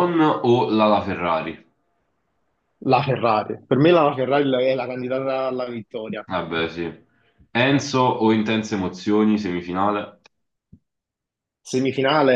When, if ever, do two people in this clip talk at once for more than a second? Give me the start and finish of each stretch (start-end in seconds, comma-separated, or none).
none